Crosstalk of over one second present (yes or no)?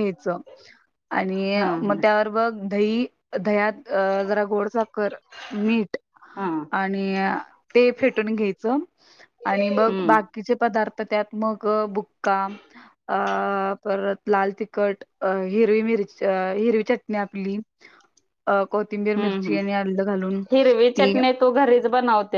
no